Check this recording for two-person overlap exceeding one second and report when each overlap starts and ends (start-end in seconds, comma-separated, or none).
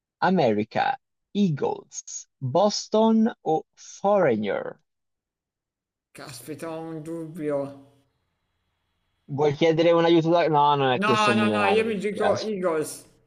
11.0-12.5